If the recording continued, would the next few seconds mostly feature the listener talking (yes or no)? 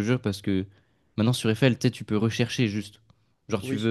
no